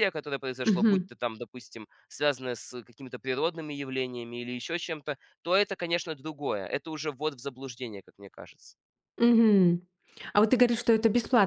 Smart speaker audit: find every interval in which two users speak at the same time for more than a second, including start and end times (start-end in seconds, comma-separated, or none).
none